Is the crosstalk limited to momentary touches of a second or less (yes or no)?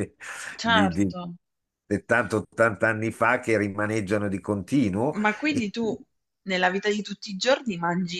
yes